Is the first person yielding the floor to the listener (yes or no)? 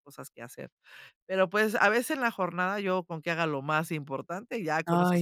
yes